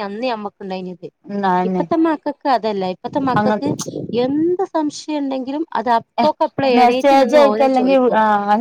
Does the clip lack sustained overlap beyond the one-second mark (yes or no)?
yes